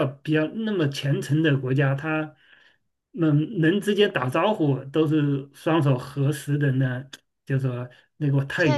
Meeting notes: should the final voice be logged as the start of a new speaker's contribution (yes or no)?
yes